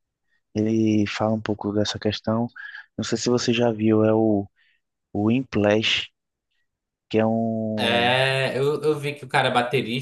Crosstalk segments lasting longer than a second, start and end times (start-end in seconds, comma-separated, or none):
none